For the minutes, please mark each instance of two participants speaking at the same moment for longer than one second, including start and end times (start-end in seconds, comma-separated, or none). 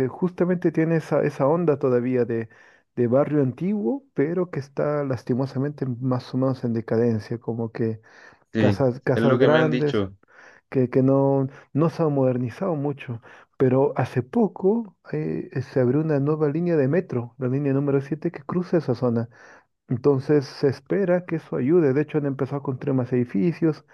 8.6-10.0